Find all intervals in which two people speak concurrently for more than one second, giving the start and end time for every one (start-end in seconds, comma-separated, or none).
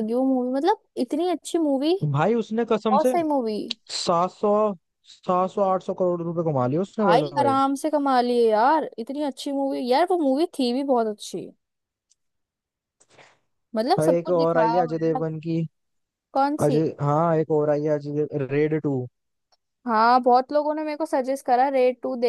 14.0-15.2